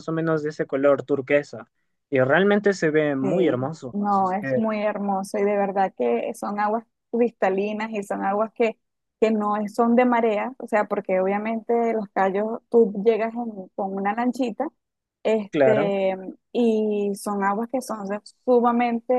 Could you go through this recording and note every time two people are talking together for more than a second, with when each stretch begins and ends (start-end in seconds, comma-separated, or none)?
3.2-4.6